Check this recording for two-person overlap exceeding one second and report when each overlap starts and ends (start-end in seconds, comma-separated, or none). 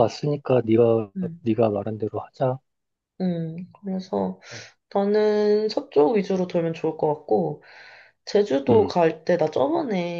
none